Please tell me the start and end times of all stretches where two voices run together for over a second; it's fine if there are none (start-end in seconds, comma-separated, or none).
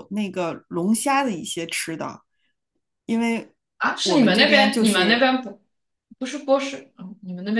4.0-5.3